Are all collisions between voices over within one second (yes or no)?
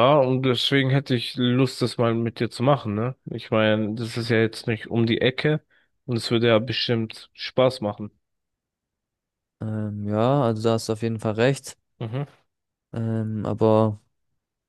yes